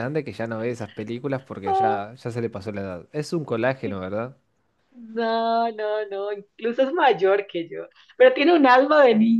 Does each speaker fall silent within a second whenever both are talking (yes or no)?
yes